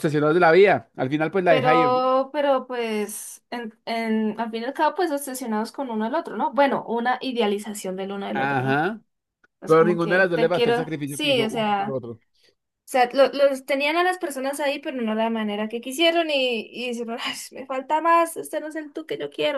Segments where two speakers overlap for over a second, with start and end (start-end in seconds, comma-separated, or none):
9.6-12.0